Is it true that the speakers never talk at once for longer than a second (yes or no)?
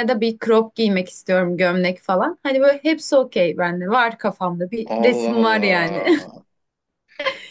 no